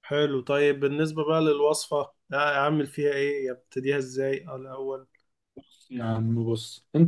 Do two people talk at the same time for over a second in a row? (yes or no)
no